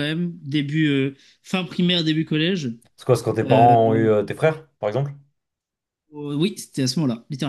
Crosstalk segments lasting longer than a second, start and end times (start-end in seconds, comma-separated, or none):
none